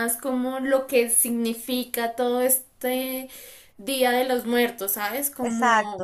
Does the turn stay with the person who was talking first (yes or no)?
yes